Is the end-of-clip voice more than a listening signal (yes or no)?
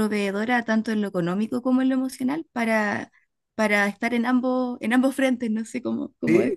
yes